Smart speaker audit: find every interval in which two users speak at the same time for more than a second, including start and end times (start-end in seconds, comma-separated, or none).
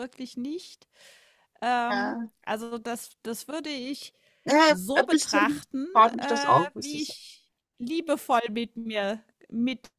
4.7-7.2